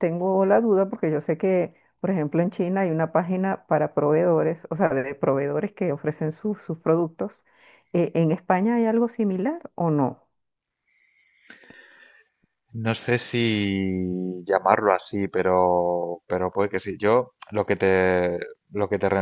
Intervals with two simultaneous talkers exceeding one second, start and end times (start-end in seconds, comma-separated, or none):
none